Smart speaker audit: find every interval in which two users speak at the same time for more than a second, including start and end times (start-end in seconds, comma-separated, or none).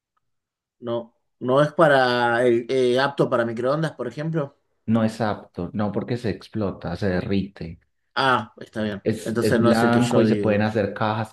9.0-10.7